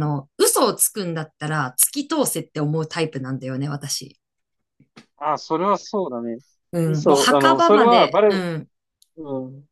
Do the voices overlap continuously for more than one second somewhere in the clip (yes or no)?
yes